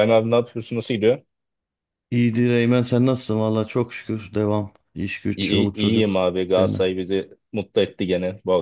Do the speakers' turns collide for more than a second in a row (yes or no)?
yes